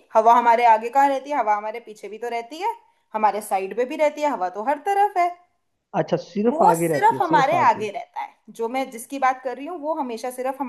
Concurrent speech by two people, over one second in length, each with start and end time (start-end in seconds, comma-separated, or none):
6.5-7.9